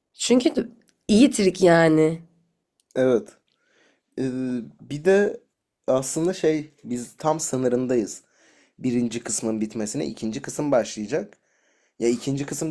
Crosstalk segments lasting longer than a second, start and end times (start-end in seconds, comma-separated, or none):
none